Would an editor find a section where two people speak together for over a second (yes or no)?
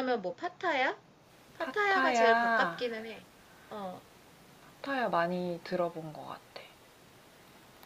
yes